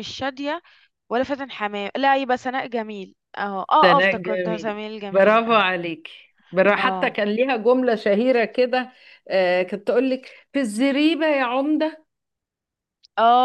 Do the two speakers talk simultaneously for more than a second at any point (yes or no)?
yes